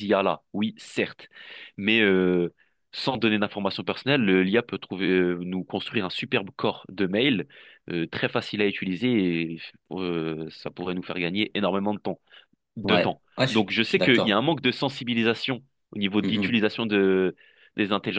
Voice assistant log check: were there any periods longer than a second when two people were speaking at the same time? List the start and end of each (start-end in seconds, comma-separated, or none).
12.8-14.4